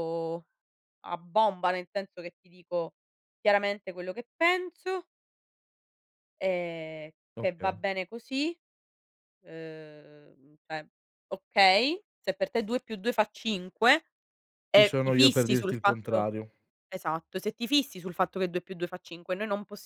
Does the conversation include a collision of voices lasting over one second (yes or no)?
yes